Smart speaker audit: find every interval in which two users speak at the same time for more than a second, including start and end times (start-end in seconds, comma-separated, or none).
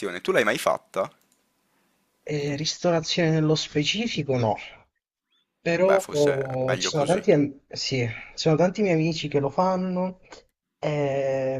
5.8-7.2